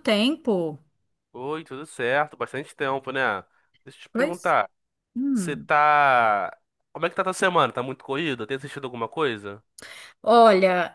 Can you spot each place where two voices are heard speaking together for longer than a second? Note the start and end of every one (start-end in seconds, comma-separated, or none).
none